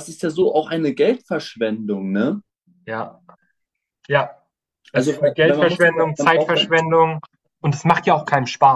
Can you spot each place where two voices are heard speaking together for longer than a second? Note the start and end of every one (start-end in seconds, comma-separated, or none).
4.9-6.7